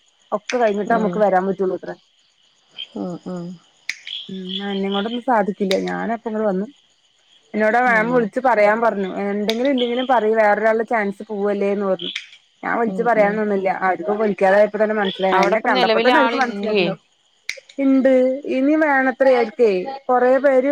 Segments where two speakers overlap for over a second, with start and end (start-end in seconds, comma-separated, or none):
15.3-16.9